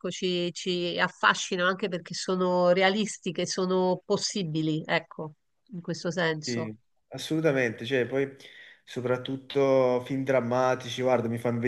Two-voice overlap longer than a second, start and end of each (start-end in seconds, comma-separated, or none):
none